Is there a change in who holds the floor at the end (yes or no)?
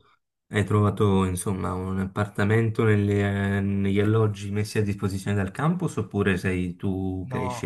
yes